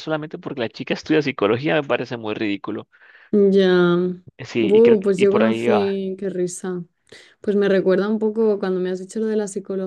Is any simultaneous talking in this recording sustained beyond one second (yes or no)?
yes